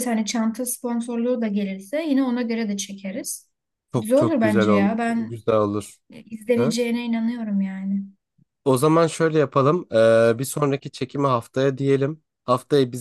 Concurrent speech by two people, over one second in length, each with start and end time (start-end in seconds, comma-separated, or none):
4.0-5.4